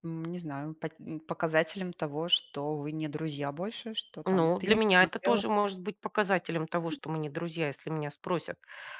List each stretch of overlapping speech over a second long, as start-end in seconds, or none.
4.2-5.4